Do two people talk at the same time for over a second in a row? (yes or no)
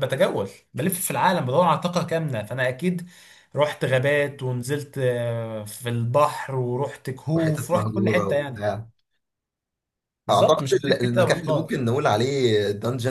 yes